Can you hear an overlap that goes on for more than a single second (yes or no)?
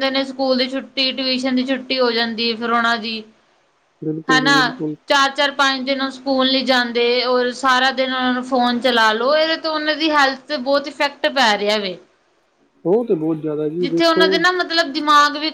no